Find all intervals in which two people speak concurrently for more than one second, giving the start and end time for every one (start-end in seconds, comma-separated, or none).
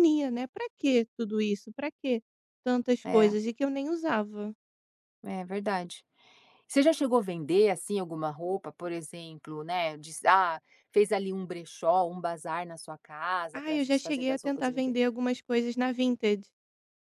13.5-15.0